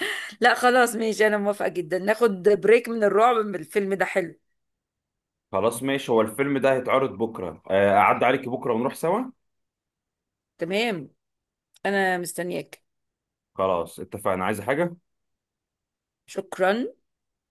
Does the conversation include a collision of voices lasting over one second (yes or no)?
no